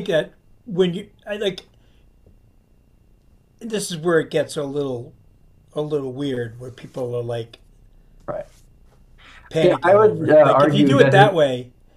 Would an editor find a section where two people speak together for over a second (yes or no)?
yes